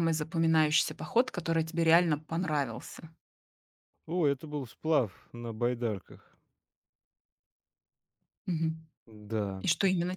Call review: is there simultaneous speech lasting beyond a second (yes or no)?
no